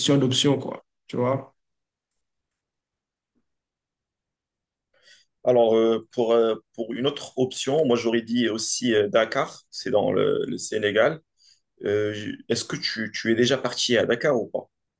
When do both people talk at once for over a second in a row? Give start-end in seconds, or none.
none